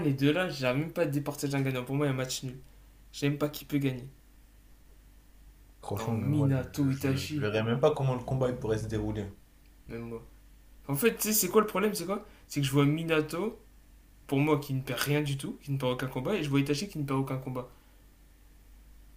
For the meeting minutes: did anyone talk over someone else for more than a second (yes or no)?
yes